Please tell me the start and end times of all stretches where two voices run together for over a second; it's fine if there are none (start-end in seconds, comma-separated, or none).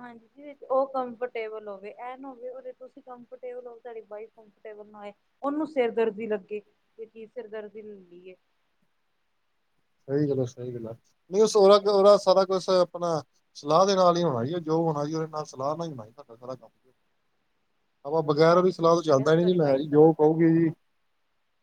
18.5-20.4